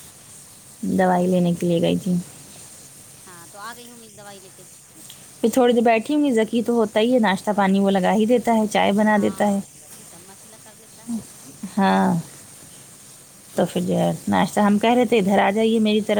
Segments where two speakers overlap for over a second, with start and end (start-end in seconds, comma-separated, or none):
none